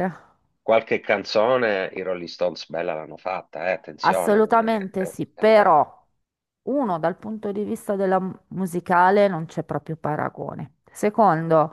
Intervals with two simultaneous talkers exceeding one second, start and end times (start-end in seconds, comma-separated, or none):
4.0-5.8